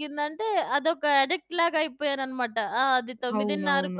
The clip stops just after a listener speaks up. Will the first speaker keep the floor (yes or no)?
yes